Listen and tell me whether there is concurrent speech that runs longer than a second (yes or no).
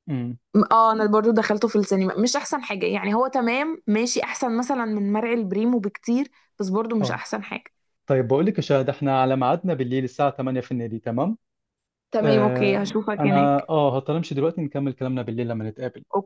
yes